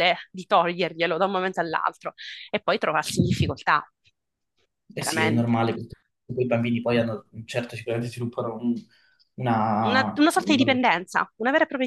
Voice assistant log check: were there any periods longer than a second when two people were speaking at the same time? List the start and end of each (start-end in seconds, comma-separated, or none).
9.8-11.0